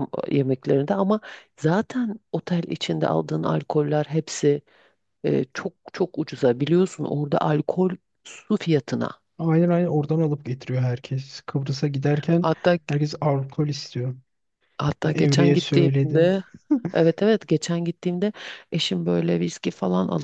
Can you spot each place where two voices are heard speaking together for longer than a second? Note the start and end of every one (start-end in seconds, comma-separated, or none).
15.0-16.4